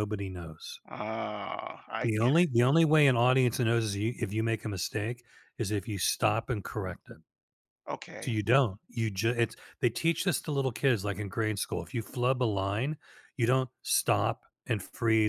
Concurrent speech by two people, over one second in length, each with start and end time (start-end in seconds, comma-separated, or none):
none